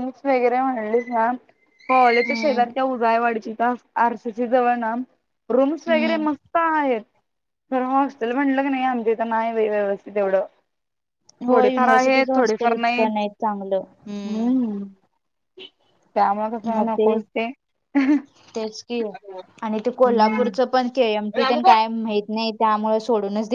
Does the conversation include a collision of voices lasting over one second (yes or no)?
yes